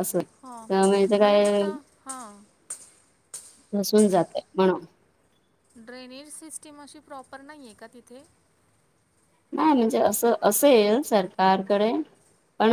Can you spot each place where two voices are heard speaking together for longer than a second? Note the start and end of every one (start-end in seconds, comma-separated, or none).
none